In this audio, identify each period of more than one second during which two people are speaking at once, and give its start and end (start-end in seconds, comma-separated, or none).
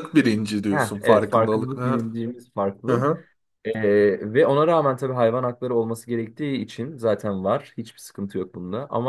0.7-2.1